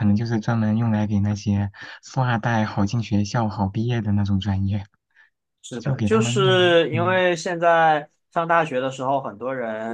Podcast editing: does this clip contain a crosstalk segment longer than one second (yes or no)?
yes